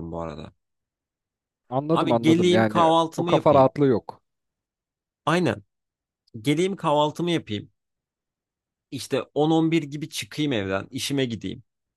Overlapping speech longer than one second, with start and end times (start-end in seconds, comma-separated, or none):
1.9-3.7